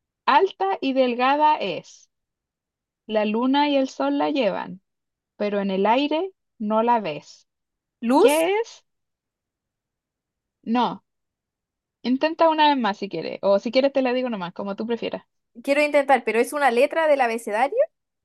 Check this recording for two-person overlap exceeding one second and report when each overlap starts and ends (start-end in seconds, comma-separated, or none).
none